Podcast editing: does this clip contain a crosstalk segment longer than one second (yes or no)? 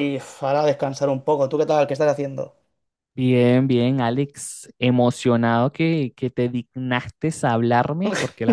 no